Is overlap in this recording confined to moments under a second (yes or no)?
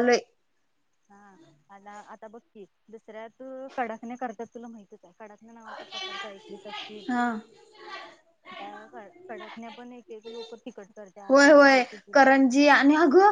no